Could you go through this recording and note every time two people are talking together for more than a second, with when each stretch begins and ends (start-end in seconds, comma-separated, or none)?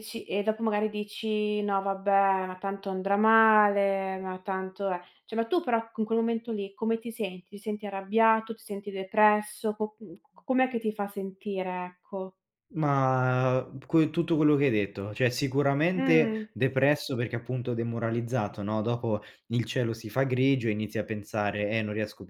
none